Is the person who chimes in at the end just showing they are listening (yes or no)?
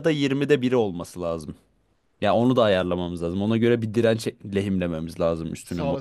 no